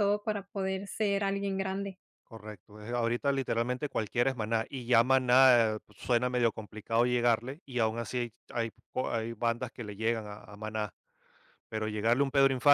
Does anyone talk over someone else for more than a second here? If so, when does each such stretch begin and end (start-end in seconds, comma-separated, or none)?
none